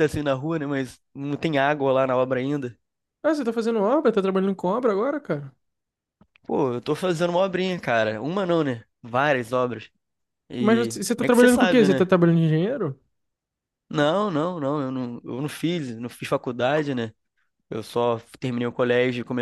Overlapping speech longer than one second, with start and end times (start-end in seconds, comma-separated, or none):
10.6-12.1